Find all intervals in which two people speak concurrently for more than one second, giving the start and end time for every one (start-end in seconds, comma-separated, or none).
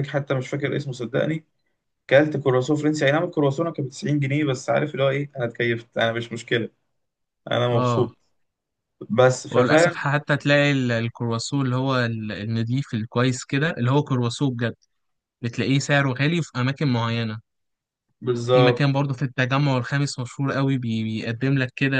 none